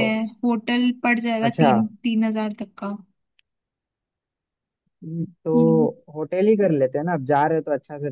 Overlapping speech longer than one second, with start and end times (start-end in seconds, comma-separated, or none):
none